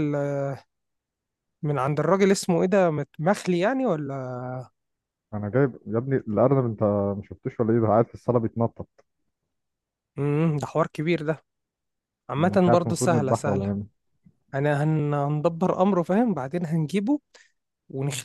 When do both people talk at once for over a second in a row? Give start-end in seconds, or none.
12.4-13.7